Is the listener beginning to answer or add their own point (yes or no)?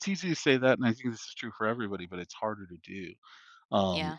no